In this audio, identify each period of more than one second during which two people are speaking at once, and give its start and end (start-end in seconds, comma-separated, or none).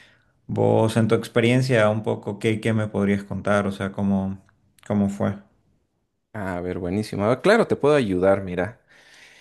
none